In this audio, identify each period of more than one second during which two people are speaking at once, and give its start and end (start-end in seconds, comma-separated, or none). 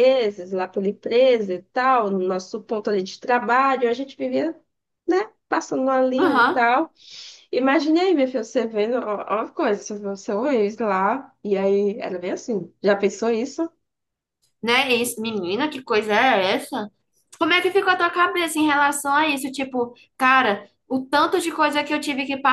none